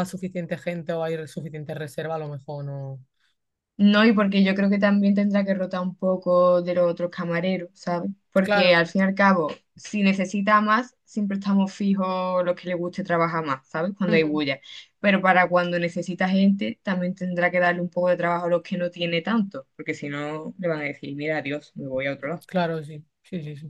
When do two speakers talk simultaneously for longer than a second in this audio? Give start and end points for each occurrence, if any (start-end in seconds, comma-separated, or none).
none